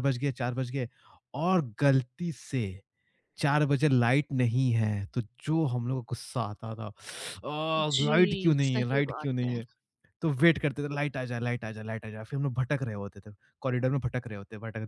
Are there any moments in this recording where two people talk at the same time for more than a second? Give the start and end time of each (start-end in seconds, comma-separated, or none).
7.8-9.6